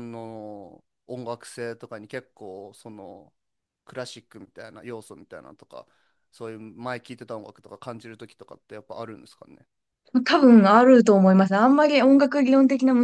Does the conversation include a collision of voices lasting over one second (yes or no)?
no